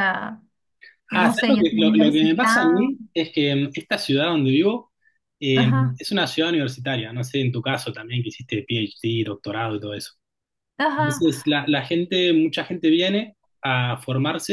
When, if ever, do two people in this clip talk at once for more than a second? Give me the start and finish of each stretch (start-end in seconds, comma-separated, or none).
1.1-2.8